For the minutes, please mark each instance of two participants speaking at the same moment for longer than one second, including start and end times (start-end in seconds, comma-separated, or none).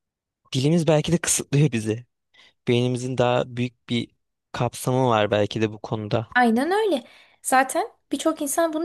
none